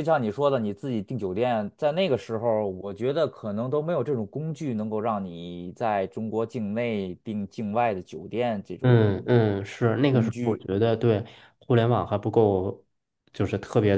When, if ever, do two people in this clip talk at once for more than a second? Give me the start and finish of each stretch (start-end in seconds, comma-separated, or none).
none